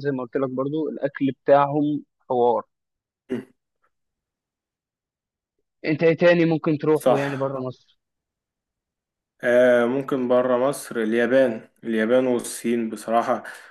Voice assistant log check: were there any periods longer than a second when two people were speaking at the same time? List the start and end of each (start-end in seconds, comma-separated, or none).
none